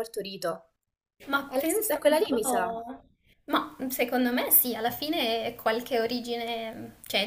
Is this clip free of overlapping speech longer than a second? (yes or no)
no